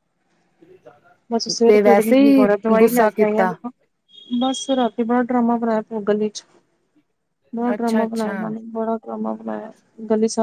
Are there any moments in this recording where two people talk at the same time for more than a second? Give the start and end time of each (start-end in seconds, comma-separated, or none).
1.7-3.5